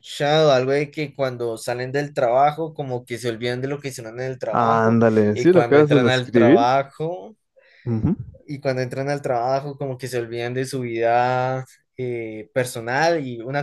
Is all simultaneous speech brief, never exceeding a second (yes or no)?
no